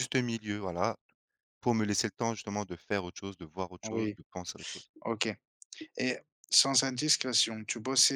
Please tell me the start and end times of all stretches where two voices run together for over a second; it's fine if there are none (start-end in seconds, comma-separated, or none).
none